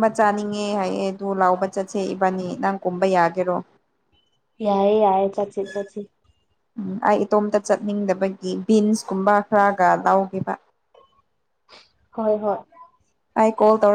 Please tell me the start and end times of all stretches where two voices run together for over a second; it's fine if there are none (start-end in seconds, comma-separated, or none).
none